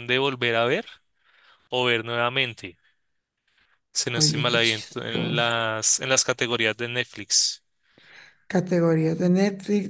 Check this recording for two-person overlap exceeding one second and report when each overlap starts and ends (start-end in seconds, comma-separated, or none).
4.2-5.5